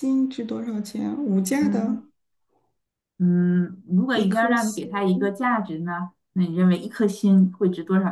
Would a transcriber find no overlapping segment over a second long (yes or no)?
no